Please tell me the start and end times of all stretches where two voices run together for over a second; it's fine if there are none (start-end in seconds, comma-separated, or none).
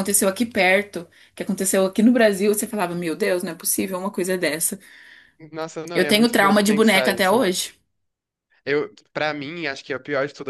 5.9-7.4